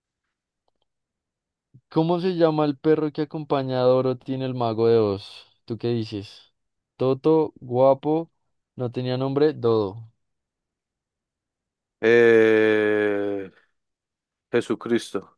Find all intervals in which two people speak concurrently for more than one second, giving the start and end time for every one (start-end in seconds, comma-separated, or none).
none